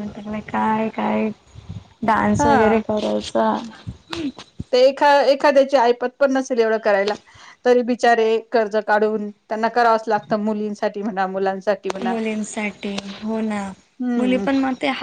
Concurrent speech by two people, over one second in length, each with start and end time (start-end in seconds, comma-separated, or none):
none